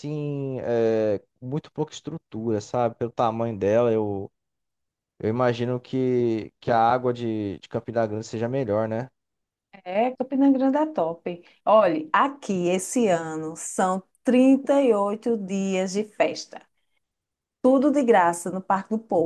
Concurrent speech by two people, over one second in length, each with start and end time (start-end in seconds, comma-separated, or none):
none